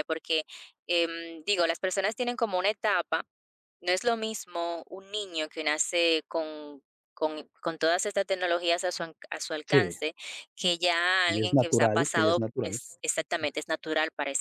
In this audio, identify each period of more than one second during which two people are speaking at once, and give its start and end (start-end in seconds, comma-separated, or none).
11.2-12.8